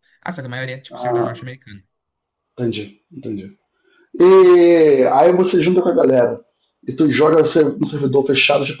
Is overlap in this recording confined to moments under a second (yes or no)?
yes